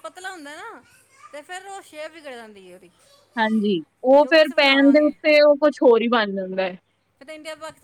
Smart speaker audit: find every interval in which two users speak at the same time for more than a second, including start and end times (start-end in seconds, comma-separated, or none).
none